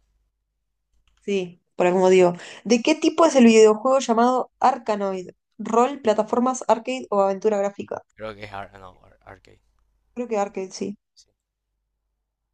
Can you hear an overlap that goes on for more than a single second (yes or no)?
no